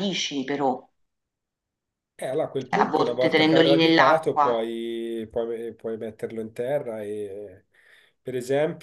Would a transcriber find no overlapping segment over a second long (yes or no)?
no